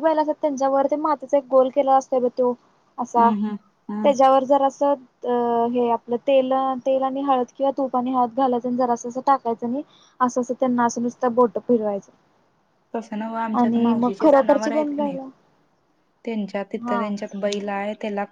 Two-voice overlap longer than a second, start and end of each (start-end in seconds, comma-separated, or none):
13.6-15.2